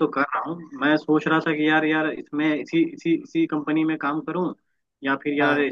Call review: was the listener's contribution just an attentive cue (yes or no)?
yes